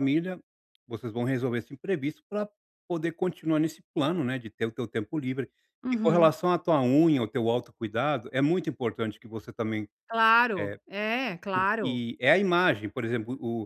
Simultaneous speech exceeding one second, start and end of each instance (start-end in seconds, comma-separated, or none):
none